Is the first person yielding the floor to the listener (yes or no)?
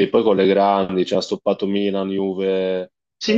yes